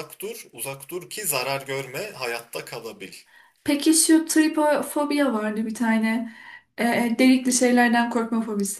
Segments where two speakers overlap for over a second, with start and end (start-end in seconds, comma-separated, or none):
none